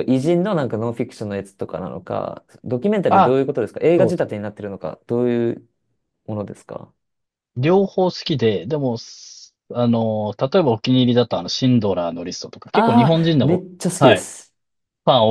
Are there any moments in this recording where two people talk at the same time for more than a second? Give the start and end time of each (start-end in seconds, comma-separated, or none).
12.7-14.3